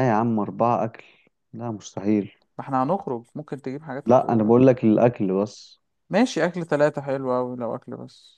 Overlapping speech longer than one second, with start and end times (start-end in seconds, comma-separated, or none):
none